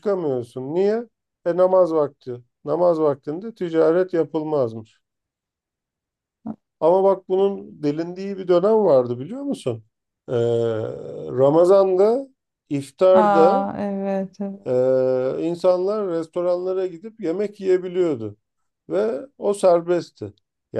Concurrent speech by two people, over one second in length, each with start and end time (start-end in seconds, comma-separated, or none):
none